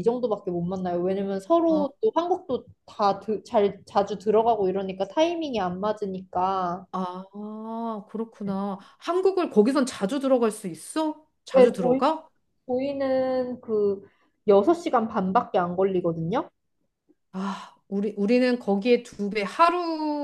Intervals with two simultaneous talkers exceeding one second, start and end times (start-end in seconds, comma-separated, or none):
none